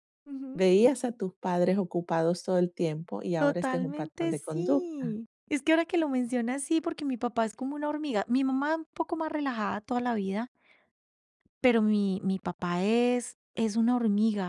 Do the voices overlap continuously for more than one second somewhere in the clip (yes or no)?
yes